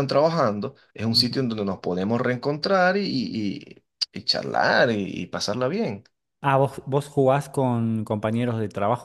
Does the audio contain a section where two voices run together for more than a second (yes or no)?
no